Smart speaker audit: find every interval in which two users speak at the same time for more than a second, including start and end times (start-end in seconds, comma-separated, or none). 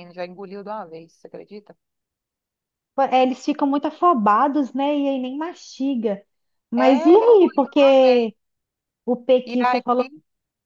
6.8-8.3